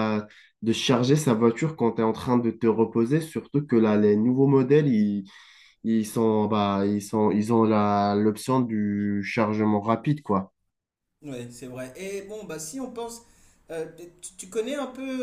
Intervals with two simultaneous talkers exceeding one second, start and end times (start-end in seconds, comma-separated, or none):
none